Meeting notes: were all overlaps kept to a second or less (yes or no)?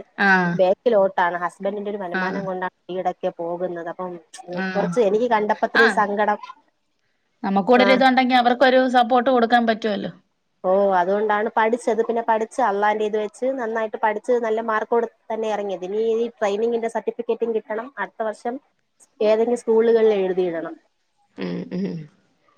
yes